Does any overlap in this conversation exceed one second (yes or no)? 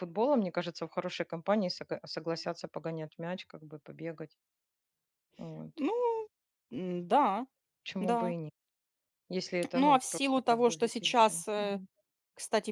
yes